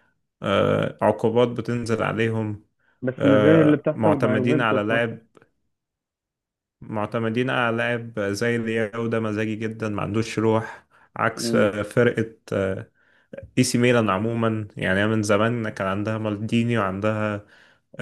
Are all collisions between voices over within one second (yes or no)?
no